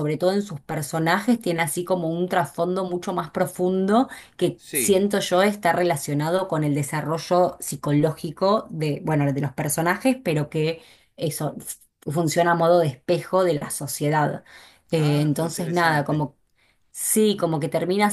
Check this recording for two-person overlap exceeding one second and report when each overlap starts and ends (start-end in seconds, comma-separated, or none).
15.0-16.3